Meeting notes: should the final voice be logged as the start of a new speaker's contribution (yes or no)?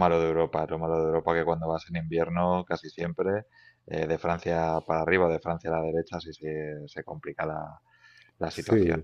no